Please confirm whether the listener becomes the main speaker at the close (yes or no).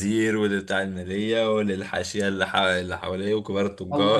yes